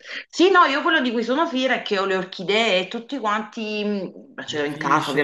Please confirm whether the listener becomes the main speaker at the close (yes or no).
yes